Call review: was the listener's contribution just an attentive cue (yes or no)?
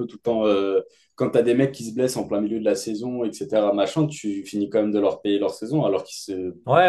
no